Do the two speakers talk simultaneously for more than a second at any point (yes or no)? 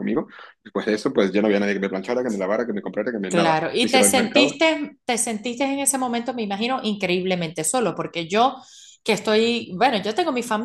yes